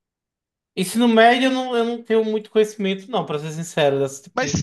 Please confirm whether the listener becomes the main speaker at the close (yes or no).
yes